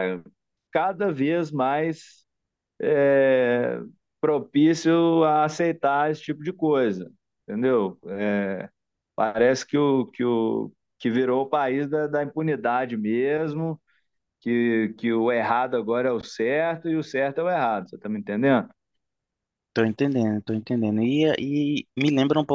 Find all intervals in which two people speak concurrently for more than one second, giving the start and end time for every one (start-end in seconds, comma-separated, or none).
none